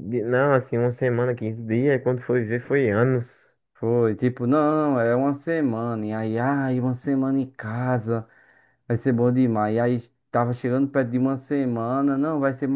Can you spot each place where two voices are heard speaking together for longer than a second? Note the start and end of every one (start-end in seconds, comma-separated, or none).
none